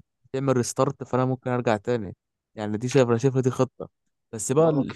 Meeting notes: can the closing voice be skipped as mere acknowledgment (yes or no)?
yes